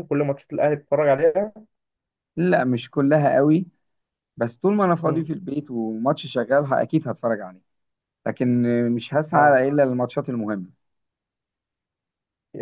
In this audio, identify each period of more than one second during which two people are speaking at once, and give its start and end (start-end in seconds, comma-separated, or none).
none